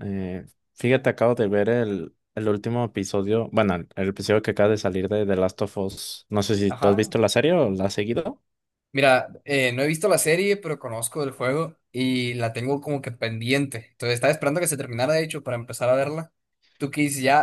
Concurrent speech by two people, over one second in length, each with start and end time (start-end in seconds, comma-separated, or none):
none